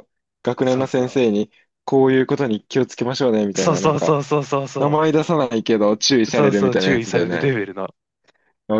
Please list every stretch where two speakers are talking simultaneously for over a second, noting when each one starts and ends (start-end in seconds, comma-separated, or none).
6.3-7.5